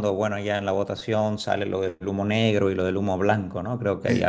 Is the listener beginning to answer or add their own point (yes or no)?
yes